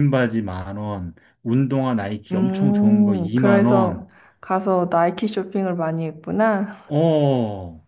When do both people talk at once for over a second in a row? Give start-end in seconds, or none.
2.3-4.1